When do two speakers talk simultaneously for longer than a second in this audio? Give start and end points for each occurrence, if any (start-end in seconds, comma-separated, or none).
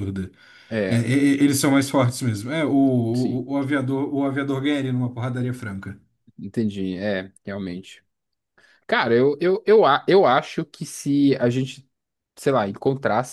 none